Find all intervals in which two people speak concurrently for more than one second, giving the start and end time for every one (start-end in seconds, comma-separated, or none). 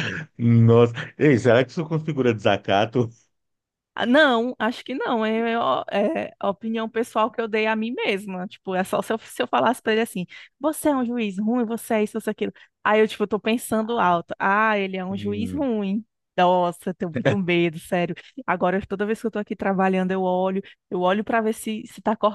none